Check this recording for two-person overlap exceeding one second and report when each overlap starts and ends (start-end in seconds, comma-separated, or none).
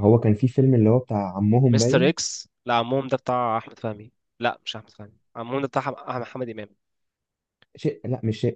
none